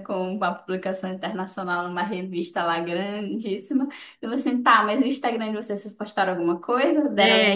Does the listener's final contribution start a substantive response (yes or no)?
yes